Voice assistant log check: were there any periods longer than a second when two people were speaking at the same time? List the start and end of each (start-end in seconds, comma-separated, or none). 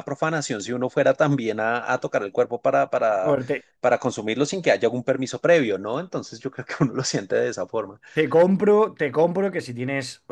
none